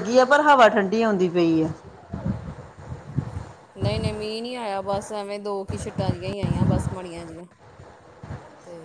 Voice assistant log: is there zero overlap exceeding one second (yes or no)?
yes